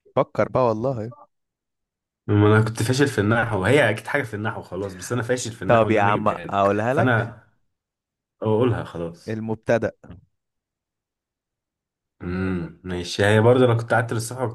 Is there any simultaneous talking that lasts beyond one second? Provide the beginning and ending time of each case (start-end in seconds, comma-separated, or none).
5.7-7.3